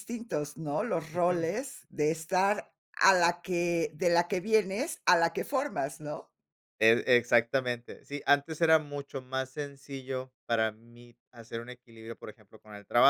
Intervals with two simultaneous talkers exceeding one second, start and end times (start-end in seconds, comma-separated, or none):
none